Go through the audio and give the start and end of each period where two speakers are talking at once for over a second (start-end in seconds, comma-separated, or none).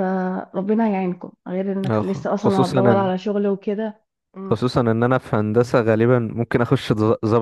1.9-3.1